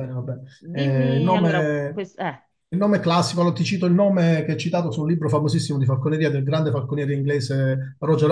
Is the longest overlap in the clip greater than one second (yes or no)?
yes